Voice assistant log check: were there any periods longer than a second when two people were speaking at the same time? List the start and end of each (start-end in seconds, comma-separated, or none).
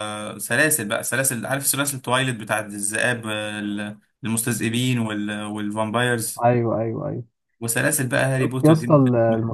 none